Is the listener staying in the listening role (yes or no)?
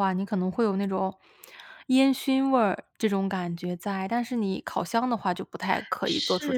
no